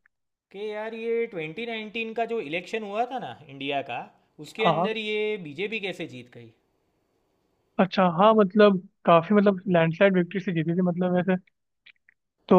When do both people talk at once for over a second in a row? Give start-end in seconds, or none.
none